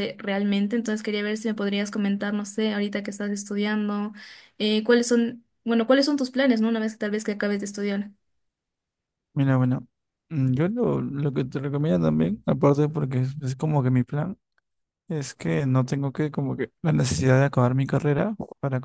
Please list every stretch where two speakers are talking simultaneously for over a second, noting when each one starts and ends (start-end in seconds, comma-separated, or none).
none